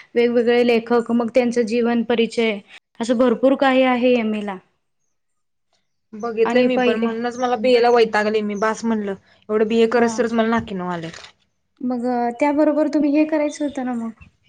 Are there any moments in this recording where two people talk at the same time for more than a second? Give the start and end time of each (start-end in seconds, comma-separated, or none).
none